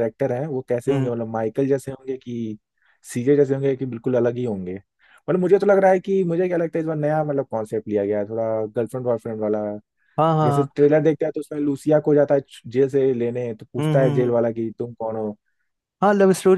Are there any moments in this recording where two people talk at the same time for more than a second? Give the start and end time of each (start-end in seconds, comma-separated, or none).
none